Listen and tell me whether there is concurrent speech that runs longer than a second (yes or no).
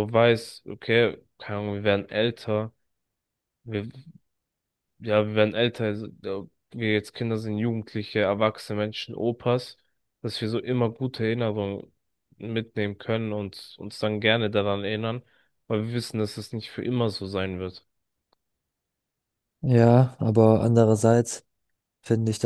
no